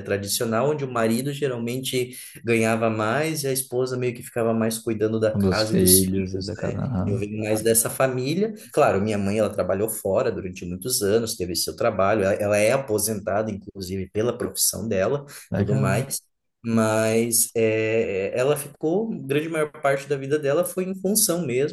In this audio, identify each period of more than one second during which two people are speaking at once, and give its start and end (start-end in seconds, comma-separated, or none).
5.3-7.2